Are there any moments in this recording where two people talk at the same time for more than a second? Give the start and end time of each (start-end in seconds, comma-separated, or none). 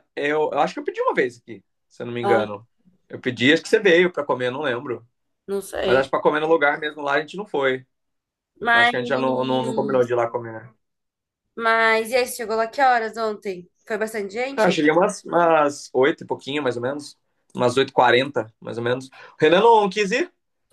none